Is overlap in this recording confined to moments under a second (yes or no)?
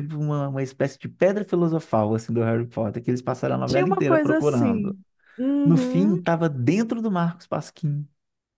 no